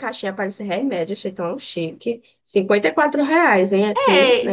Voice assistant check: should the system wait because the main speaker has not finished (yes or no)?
no